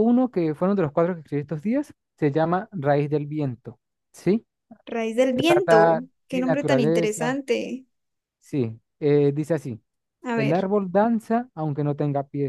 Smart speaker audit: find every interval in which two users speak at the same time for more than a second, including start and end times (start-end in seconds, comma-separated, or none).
5.3-7.4